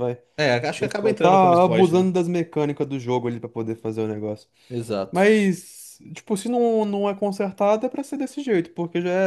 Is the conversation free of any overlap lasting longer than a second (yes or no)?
no